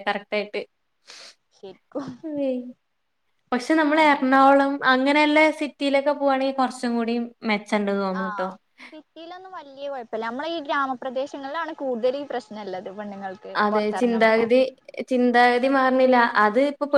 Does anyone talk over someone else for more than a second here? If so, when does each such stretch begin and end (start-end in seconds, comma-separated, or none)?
none